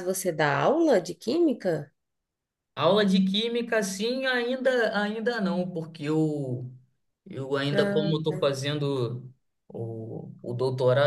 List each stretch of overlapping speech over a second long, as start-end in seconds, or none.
none